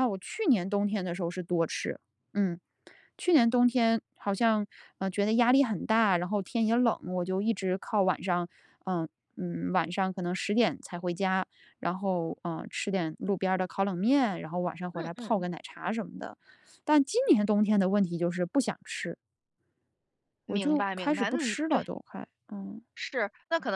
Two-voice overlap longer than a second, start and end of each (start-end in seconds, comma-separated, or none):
20.5-21.8